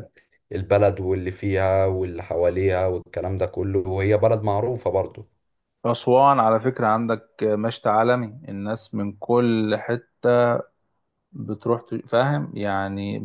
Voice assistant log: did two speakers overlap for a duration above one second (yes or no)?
no